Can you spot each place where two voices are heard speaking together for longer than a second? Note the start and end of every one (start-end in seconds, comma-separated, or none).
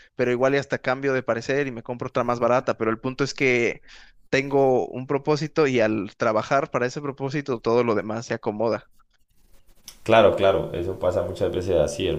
none